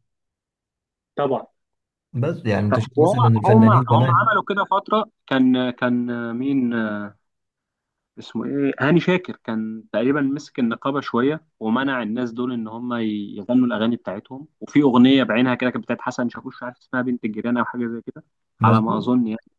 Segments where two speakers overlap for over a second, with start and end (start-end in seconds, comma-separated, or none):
2.7-4.3